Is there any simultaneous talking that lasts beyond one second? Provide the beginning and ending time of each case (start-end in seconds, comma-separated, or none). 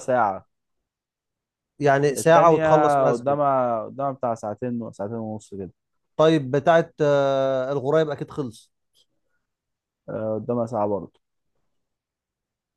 2.2-3.4